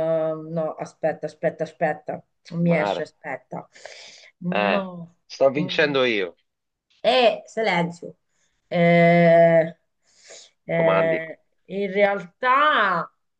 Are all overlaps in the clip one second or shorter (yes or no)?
yes